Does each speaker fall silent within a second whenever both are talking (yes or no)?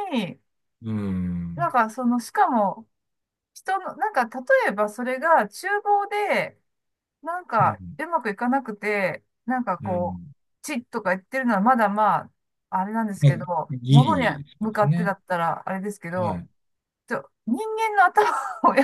no